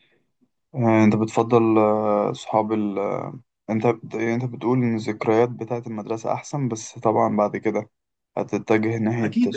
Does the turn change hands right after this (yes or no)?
yes